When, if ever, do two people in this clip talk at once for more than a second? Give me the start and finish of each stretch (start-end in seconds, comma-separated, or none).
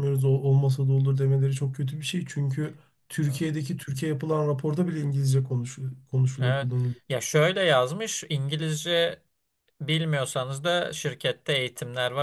none